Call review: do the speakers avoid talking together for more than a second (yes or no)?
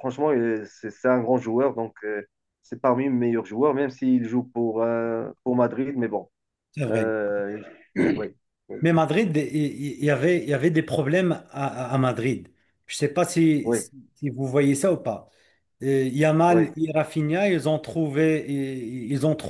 yes